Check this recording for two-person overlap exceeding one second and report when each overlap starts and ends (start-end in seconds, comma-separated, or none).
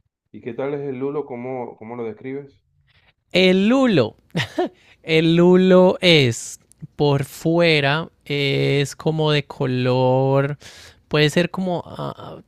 none